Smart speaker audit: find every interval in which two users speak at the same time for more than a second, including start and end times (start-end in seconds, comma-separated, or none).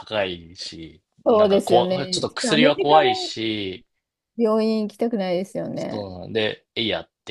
1.2-3.1